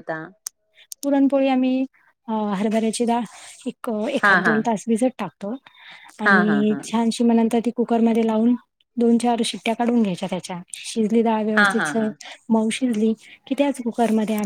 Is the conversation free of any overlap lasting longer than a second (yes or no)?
yes